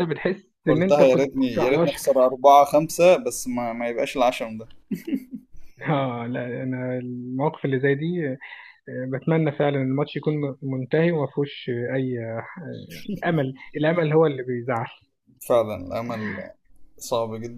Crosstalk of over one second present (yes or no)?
yes